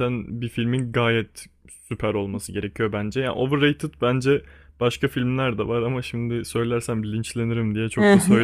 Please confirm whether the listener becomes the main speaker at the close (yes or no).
yes